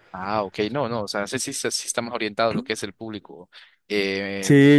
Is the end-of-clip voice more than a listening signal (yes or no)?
yes